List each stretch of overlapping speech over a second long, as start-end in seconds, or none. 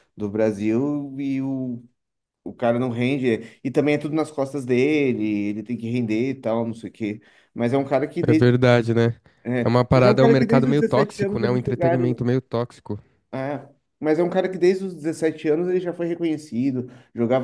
9.6-12.2